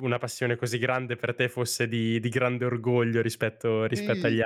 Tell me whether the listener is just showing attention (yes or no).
no